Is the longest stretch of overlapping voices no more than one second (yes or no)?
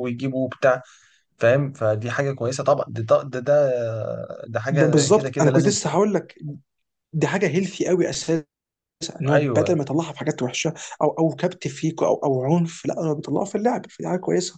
no